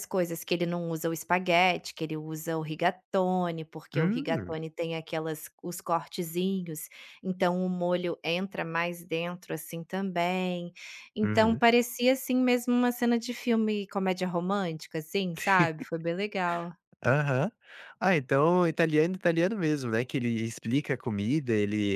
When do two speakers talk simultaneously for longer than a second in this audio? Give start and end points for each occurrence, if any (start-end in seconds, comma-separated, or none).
none